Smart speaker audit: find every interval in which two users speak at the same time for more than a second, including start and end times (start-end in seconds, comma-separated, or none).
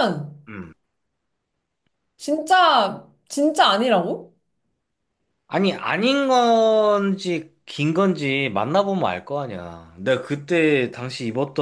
none